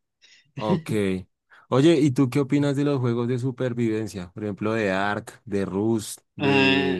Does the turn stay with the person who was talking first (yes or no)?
yes